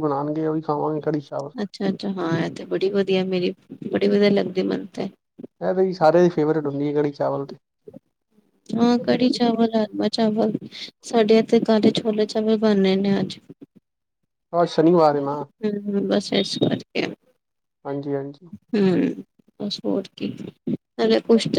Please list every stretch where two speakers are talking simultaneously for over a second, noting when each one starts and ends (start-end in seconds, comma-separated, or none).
none